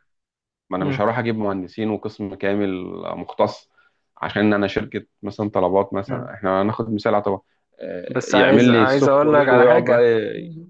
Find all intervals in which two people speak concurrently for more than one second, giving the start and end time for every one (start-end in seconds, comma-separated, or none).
8.3-10.0